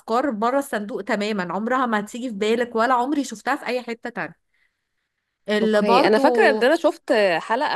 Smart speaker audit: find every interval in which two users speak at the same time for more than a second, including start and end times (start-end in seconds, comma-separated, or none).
none